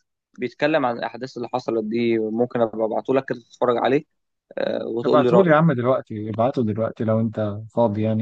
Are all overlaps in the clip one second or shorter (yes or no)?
yes